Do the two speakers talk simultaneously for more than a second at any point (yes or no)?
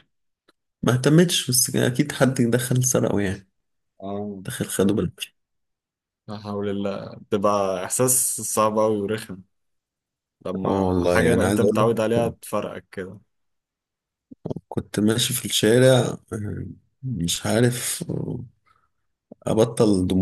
yes